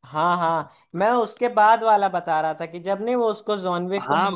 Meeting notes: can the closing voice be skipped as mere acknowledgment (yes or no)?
no